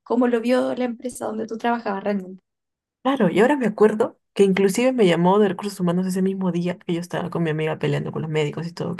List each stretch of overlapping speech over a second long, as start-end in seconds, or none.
none